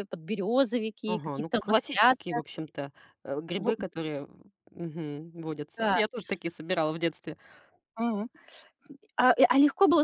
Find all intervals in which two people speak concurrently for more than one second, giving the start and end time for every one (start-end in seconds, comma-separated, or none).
1.1-2.4